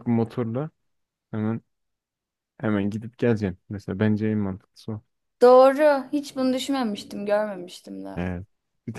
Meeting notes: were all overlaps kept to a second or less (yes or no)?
yes